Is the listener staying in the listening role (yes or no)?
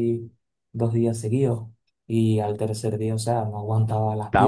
yes